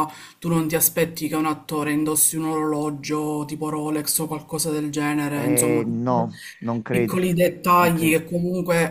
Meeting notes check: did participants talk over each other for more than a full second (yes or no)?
no